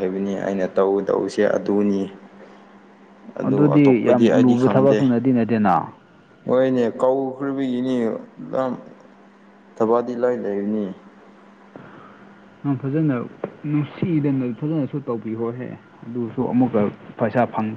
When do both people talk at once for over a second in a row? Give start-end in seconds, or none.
3.4-5.0